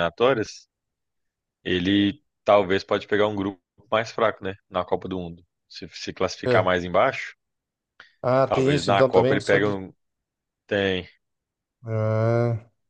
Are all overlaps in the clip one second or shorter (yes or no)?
no